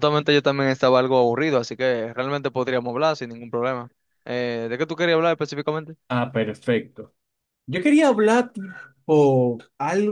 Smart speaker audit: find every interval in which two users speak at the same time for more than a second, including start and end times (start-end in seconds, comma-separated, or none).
none